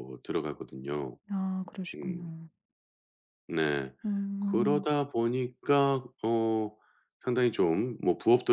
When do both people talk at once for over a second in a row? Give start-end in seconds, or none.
none